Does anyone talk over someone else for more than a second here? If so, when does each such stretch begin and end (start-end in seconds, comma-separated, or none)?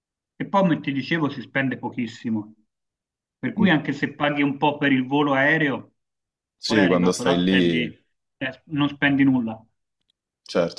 6.7-7.8